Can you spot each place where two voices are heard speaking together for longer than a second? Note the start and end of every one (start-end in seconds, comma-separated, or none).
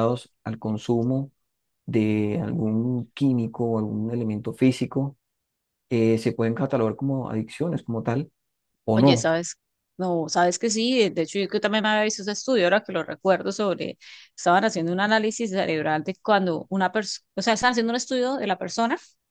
none